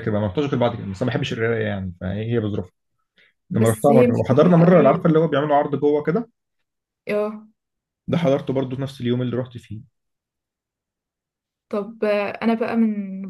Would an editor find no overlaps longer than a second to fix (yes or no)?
no